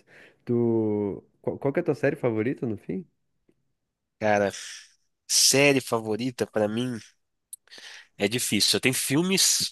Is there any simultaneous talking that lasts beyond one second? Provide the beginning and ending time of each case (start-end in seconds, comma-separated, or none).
none